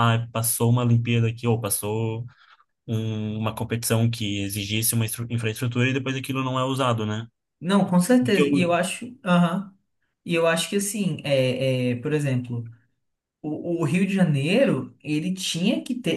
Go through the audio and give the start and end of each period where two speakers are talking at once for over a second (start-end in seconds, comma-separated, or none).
none